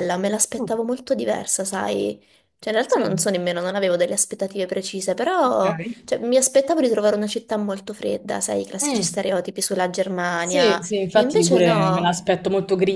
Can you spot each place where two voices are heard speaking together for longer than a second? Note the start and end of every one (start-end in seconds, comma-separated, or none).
10.4-12.1